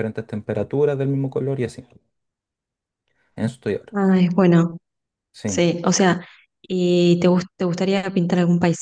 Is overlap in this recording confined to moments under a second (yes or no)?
yes